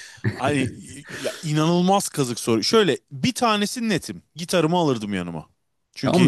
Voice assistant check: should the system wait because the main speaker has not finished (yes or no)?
no